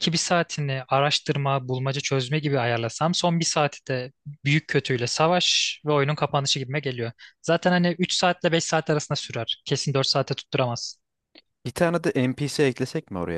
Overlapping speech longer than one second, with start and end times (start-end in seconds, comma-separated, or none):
none